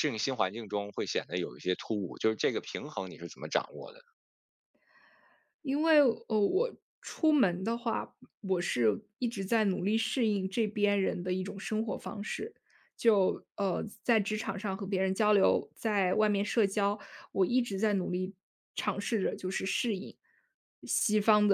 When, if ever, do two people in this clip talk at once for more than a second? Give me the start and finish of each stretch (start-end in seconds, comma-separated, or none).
none